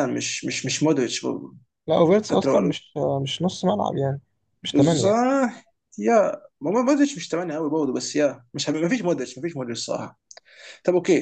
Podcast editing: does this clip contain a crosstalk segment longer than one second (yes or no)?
no